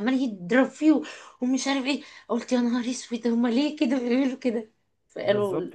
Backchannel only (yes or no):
no